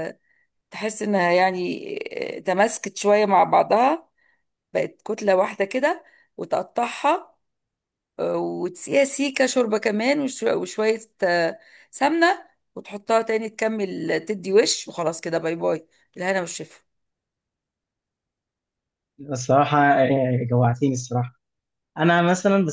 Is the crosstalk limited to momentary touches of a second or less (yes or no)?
yes